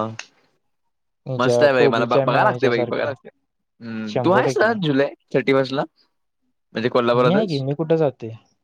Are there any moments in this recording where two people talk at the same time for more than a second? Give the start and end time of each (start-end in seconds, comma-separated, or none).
1.4-3.1